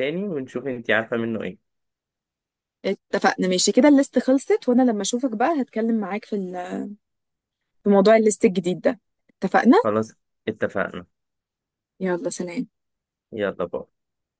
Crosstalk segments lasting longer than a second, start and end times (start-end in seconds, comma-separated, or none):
none